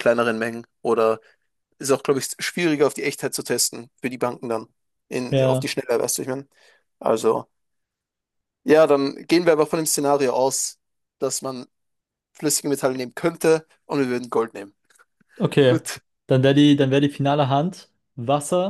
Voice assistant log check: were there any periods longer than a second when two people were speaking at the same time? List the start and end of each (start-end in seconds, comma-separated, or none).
none